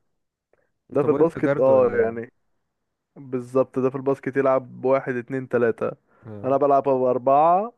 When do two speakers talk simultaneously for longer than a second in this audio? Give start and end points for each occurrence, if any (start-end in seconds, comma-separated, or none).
0.9-2.3